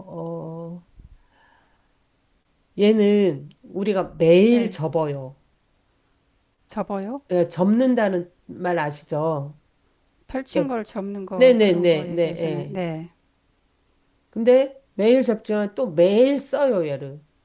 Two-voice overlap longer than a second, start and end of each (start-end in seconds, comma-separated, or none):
11.3-12.8